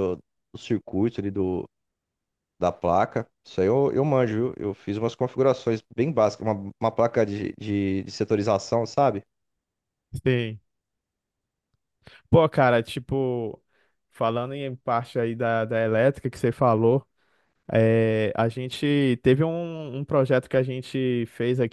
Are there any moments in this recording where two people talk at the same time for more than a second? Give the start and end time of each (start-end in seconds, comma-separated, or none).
none